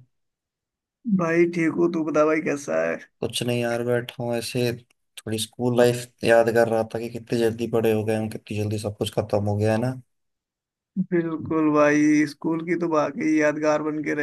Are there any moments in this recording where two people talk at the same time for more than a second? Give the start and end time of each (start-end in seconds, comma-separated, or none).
none